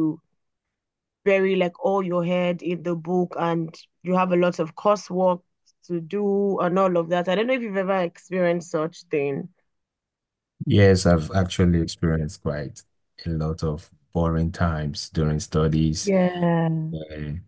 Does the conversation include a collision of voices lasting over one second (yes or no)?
no